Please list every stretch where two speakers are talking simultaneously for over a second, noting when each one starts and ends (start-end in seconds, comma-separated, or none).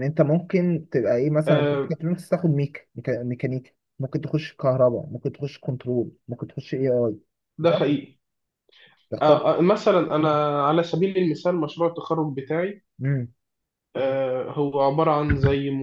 none